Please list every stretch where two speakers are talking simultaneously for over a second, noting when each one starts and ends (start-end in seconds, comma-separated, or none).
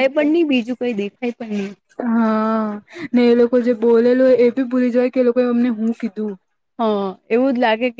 none